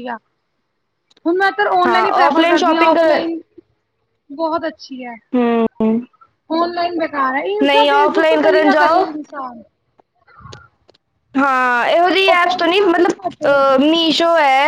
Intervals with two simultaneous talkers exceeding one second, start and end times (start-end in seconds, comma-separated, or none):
1.9-3.2, 7.6-9.1